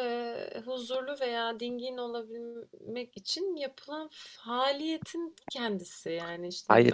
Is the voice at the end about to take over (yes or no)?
no